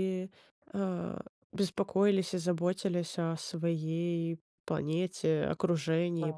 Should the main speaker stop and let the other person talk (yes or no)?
yes